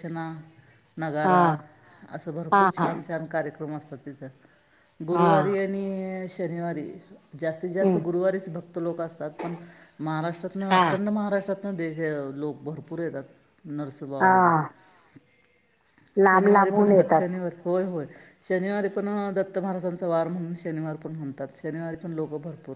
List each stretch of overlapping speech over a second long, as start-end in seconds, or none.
none